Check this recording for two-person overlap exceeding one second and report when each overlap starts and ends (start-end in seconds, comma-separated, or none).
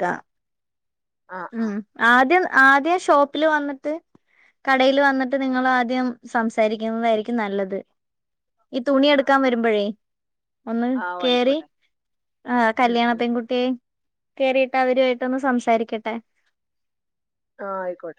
none